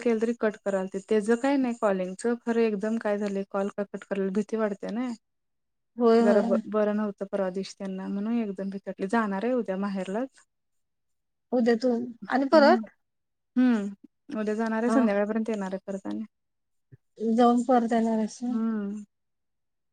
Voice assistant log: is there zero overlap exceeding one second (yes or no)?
yes